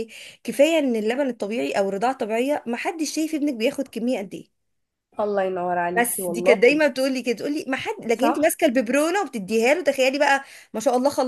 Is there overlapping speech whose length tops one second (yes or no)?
no